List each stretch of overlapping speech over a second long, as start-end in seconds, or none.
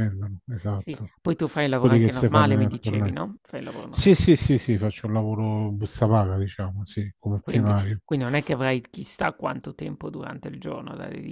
1.8-3.1